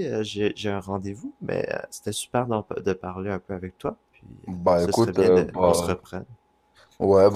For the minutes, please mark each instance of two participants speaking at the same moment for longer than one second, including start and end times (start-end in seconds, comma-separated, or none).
4.5-6.0